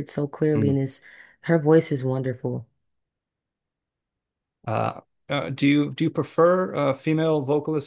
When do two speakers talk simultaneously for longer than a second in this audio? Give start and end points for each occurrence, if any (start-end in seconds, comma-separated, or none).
none